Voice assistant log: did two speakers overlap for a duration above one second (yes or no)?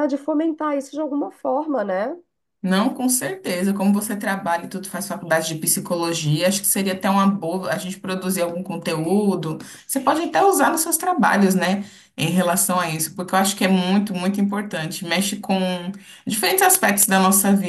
no